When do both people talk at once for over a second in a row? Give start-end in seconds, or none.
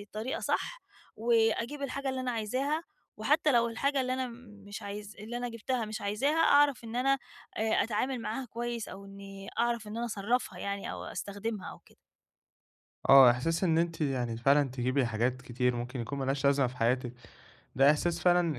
none